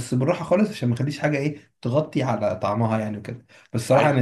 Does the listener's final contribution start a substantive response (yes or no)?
no